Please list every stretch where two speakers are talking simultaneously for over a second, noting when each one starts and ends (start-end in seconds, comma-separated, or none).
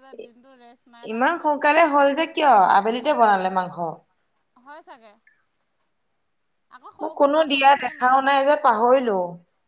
7.0-9.1